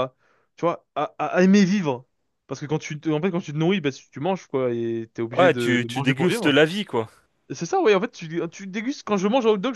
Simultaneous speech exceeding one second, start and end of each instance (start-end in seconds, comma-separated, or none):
5.3-6.6